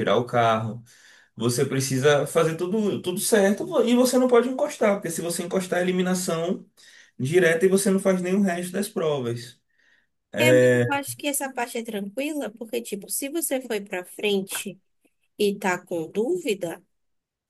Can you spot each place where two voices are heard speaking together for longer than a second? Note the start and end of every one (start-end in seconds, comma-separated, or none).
none